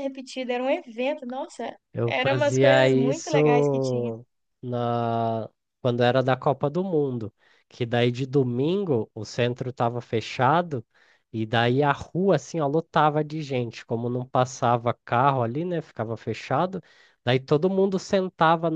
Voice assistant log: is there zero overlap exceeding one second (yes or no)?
no